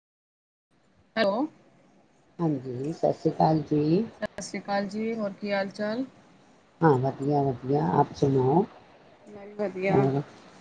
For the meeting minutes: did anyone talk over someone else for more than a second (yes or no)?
no